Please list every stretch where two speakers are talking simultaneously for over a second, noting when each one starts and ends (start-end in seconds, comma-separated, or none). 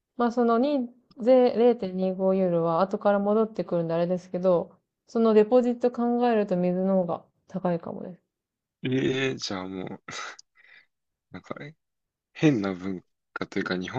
none